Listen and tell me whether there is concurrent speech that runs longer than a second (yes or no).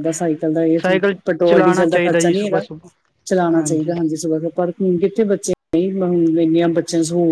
yes